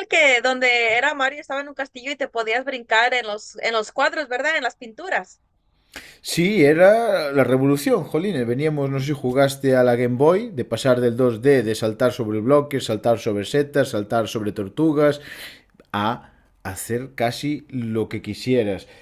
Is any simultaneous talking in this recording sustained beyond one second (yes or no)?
no